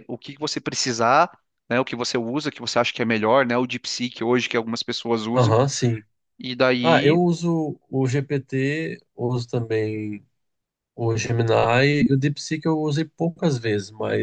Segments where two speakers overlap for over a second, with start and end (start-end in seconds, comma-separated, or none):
none